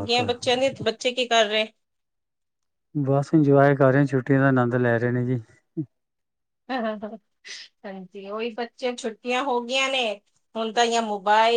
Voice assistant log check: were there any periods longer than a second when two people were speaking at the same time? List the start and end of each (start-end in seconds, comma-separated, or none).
none